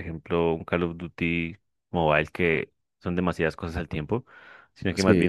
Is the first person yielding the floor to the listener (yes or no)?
no